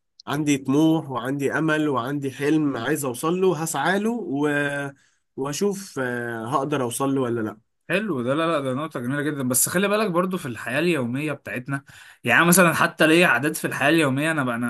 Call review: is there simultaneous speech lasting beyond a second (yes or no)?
no